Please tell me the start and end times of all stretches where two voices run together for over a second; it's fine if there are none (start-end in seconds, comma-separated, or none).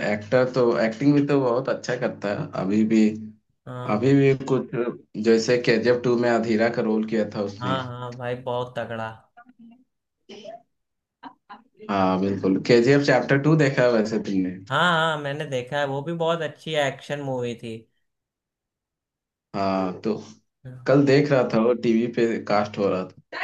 none